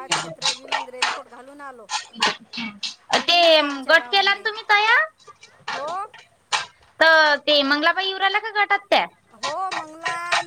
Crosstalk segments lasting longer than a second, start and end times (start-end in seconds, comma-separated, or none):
3.2-4.4